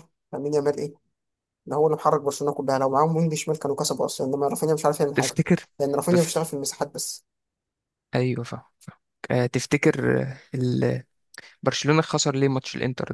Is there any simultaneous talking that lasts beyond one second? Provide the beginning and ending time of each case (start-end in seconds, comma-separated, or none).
none